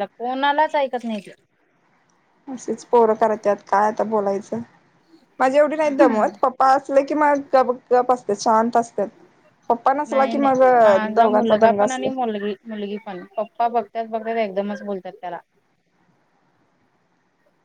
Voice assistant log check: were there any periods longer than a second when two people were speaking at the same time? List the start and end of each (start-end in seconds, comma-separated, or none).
10.1-12.1